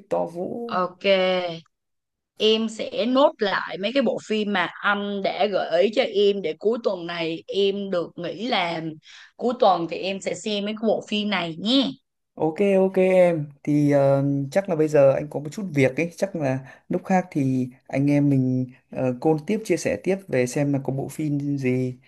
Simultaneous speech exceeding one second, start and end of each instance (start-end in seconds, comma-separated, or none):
none